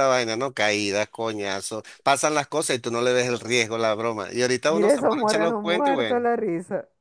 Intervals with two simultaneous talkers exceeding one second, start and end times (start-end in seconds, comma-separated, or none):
4.7-6.2